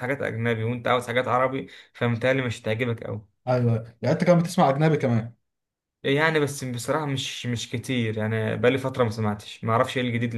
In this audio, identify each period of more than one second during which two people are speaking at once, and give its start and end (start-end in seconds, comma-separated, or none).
none